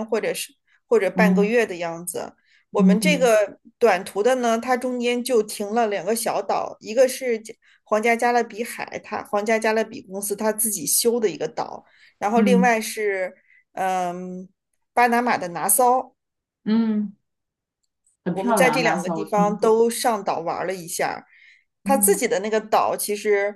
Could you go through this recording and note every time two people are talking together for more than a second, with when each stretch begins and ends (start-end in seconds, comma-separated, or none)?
18.3-19.9